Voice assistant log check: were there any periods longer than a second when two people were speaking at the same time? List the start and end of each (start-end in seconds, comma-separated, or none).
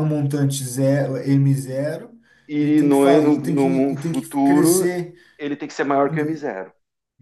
2.6-4.9